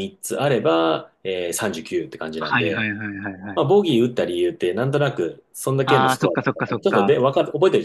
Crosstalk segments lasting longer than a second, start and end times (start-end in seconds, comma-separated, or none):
5.8-7.1